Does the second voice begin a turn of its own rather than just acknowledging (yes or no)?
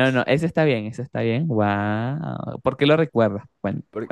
yes